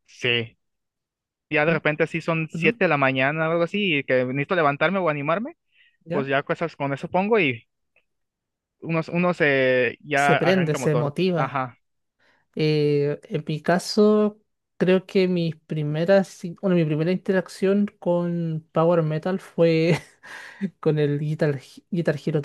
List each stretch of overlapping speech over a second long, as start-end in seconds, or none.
10.1-11.6